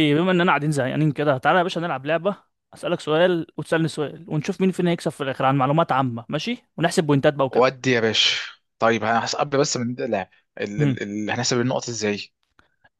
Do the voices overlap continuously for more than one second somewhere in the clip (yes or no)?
no